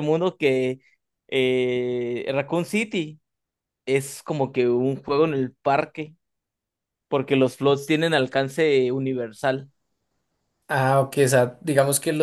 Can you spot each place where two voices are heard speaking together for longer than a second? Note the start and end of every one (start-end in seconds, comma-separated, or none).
none